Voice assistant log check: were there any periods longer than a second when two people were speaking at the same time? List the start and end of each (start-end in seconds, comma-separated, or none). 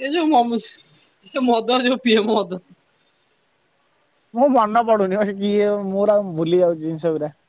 none